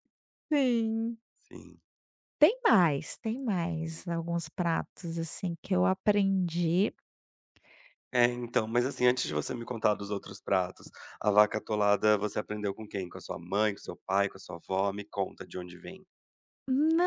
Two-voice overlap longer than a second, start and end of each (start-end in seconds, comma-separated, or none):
none